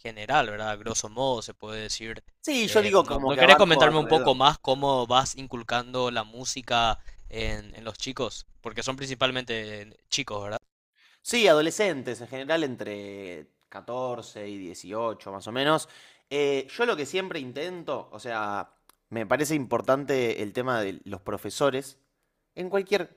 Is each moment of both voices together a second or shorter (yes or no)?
no